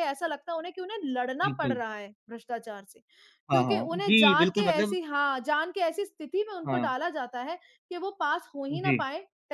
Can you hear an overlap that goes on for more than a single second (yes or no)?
yes